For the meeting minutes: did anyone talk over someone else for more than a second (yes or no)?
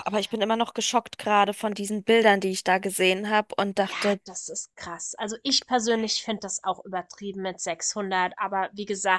no